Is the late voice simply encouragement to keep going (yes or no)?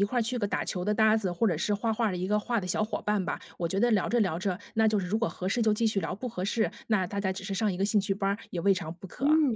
no